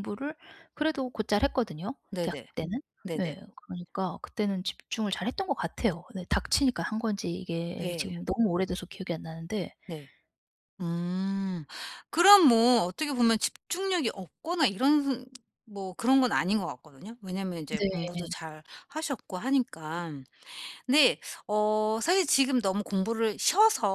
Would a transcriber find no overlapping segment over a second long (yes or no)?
yes